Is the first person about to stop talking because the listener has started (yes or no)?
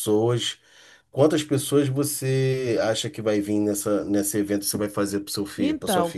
yes